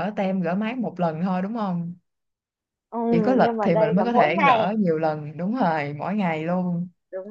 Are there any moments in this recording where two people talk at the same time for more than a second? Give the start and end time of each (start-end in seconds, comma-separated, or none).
3.4-4.7